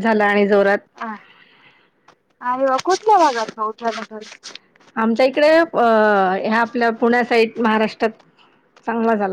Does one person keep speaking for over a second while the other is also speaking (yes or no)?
no